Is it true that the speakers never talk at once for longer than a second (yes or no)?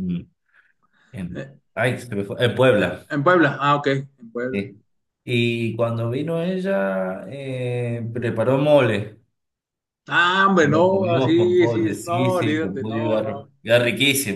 no